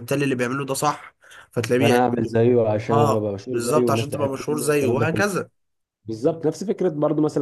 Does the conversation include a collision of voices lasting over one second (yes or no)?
yes